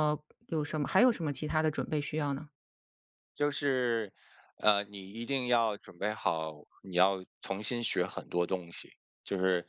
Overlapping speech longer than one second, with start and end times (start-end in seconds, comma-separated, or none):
none